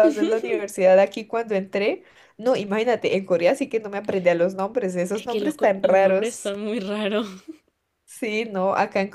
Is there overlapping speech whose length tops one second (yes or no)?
yes